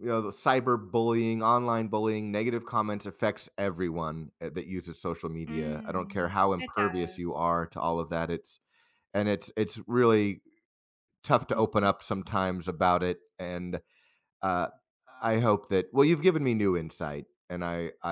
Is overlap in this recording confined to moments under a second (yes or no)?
no